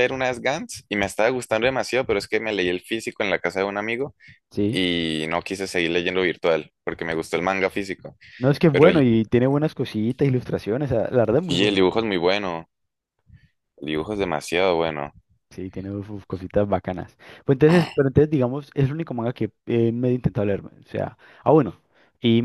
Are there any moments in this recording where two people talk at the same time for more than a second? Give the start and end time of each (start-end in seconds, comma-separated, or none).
none